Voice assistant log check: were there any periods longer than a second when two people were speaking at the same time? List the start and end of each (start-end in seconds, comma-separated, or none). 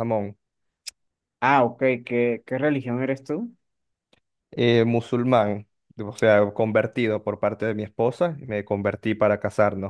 none